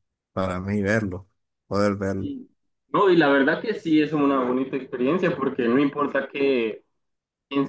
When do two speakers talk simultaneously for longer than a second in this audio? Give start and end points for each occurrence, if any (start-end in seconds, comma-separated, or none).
none